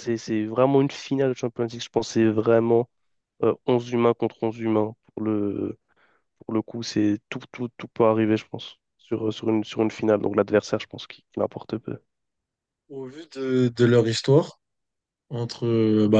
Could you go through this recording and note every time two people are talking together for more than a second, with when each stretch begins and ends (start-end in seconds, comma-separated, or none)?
none